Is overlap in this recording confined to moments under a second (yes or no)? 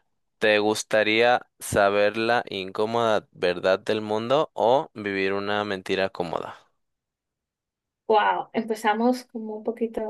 yes